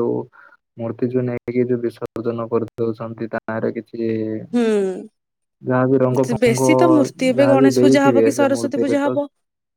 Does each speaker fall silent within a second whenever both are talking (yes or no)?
no